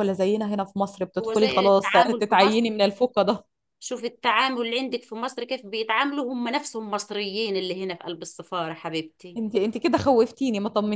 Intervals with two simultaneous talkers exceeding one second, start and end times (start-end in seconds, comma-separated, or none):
1.2-2.7